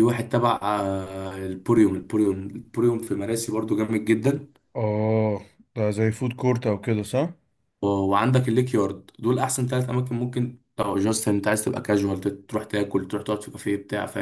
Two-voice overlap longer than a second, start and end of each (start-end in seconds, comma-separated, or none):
none